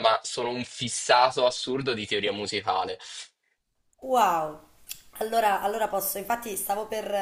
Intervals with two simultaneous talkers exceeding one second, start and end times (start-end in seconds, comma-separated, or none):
none